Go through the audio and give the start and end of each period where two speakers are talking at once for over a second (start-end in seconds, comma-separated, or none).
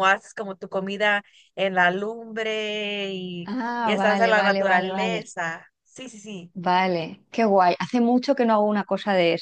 3.5-5.2